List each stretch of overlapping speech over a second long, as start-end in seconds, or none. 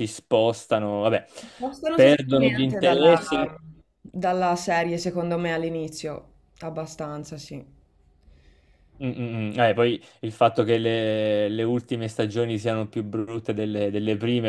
1.9-3.2